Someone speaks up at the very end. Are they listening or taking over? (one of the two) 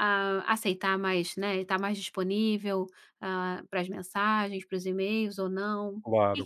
taking over